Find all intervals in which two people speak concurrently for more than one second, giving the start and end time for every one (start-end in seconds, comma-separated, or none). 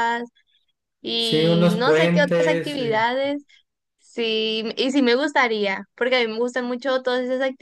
1.1-3.0